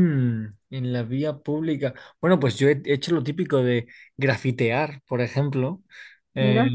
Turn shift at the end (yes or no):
no